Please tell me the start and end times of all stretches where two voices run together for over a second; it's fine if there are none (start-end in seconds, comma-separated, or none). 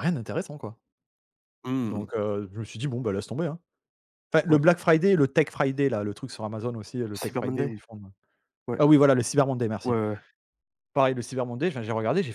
none